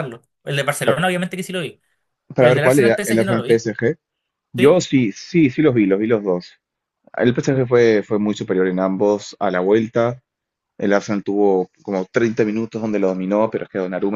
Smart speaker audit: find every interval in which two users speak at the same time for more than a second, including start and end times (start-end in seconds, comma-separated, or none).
2.4-3.6